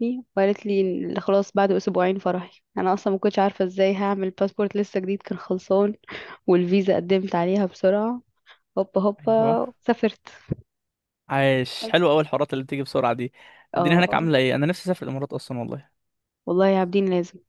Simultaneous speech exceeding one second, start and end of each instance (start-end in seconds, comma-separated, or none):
none